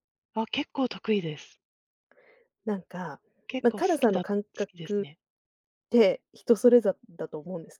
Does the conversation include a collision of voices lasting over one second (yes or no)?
yes